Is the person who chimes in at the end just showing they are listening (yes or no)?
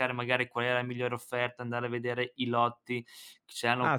no